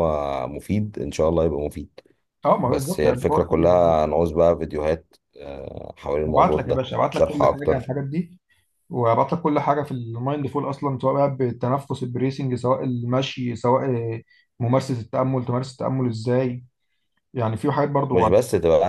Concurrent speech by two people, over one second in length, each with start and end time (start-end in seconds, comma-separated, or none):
2.6-4.0, 6.3-7.9